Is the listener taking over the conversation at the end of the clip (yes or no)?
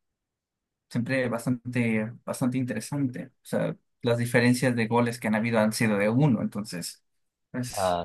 no